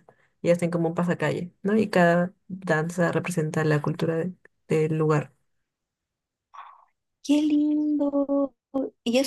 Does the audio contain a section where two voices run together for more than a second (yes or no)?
no